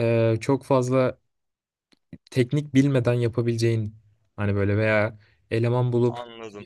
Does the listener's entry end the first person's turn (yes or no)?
no